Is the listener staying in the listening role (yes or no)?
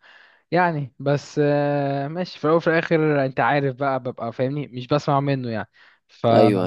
no